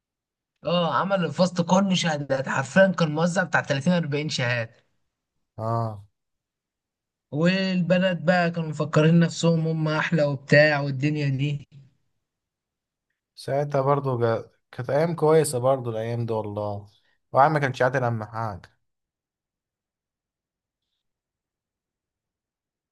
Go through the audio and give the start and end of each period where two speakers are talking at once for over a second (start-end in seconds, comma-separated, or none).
none